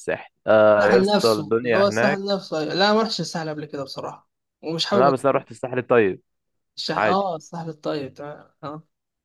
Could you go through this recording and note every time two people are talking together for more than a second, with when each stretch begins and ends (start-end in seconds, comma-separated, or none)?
0.8-2.4